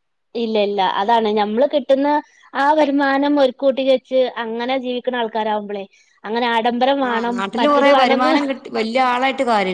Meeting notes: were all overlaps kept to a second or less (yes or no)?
yes